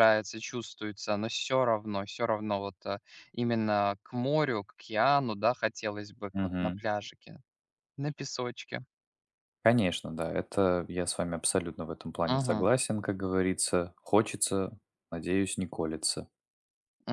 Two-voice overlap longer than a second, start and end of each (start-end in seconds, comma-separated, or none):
none